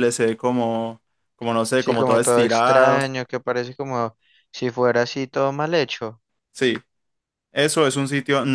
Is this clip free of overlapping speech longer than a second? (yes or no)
no